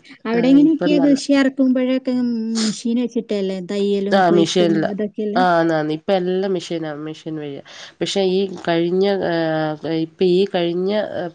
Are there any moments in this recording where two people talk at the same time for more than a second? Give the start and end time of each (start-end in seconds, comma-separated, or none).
none